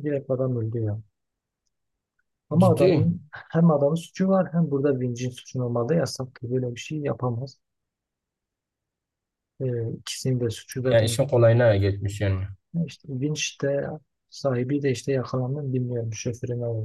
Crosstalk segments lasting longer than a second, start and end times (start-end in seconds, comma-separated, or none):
none